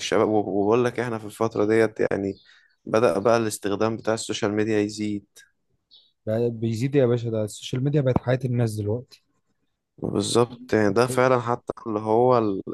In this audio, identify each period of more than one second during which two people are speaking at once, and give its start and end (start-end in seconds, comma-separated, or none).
none